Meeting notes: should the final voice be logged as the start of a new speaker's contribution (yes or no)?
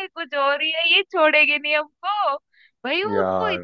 no